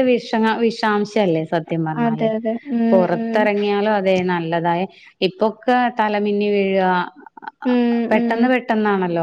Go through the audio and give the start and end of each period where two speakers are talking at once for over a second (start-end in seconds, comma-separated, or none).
none